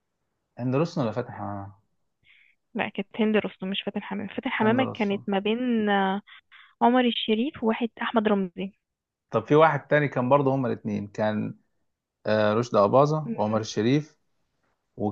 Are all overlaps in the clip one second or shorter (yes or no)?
yes